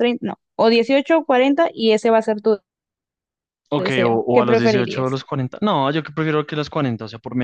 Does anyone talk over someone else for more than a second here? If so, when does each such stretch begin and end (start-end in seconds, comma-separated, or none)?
3.8-5.2